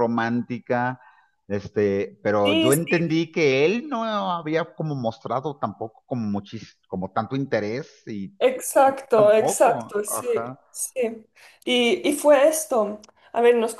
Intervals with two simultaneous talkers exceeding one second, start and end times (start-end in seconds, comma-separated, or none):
9.0-10.6